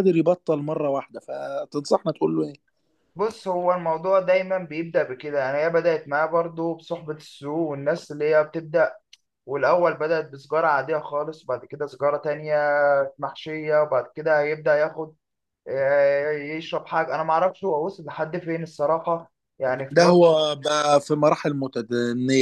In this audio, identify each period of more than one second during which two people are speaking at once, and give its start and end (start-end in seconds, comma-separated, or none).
none